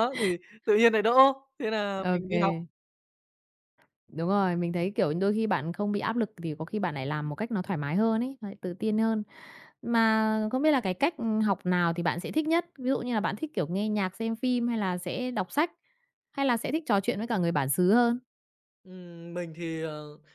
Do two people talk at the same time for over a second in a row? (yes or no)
no